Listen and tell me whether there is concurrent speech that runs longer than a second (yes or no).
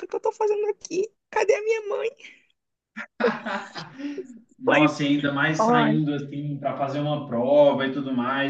no